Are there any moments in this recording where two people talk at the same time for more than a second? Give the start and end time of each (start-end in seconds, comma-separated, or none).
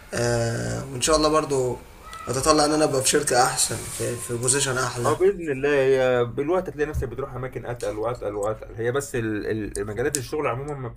none